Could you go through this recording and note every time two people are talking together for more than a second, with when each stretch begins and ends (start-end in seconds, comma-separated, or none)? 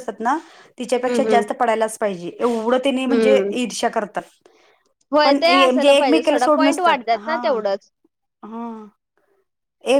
5.2-7.4